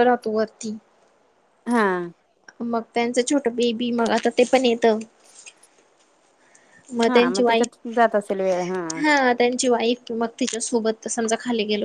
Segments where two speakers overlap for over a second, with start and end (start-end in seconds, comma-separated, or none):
none